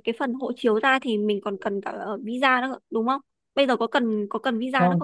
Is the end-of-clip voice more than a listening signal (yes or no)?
yes